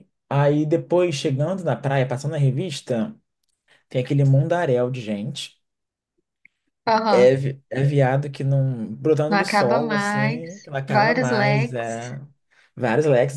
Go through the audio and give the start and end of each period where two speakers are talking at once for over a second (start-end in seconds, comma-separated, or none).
9.3-12.1